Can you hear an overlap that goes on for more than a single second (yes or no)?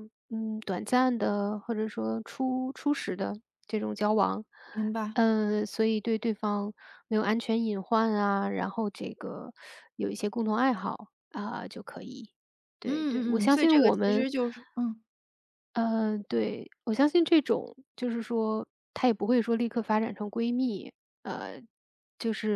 yes